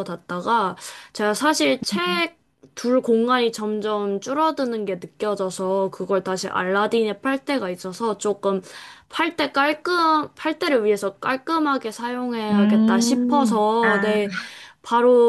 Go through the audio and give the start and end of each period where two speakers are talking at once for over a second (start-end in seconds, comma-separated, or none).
12.5-14.2